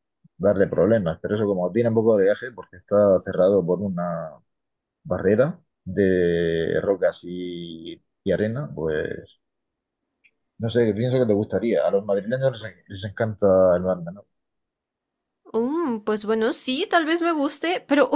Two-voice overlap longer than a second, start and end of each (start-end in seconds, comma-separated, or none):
none